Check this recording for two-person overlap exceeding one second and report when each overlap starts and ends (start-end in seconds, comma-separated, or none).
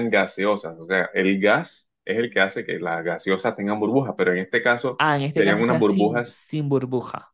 5.0-6.4